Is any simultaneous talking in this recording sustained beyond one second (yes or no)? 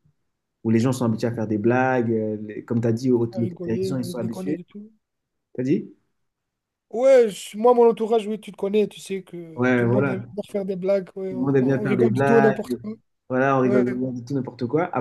yes